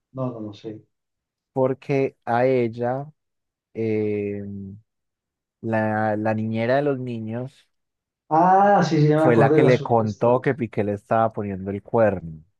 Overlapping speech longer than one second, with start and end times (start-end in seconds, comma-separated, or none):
9.2-10.4